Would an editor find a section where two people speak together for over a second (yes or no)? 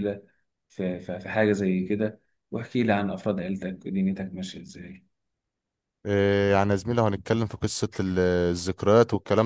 no